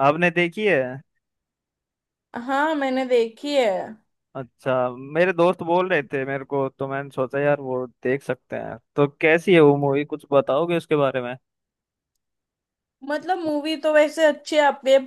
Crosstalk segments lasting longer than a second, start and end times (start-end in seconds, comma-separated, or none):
none